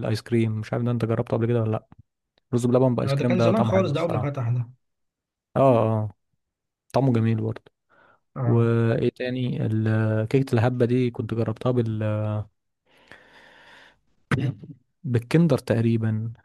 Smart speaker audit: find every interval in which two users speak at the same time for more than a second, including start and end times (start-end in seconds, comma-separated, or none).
3.0-4.3